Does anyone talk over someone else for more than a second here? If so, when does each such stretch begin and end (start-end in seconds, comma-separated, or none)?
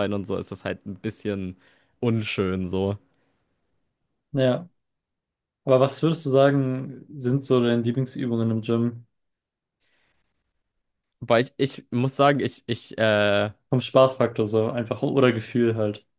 none